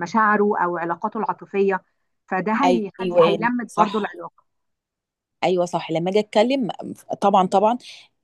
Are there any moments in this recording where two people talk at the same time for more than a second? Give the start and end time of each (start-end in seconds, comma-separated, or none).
2.6-4.2